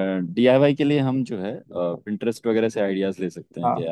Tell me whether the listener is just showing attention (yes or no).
yes